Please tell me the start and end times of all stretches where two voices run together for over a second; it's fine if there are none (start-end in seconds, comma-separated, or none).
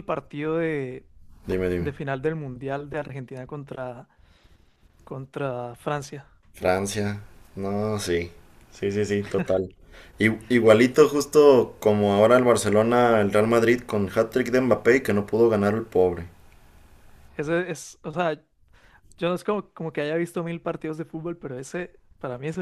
none